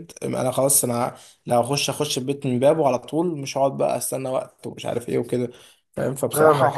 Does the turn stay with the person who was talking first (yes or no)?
no